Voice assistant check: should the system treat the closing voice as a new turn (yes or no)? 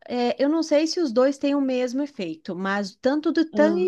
no